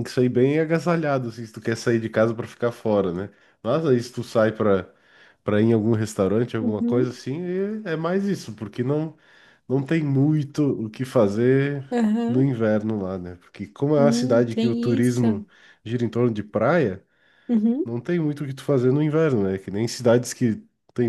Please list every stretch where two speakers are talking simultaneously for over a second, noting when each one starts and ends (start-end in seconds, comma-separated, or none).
13.9-15.2